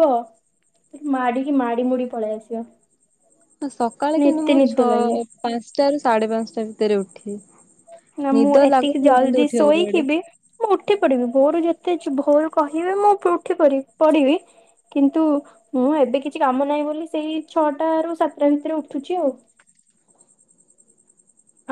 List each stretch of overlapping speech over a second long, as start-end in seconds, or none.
8.3-10.0